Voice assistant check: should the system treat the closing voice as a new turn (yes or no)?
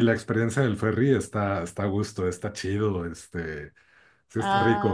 yes